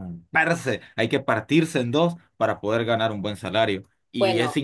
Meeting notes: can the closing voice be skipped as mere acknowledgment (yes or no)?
yes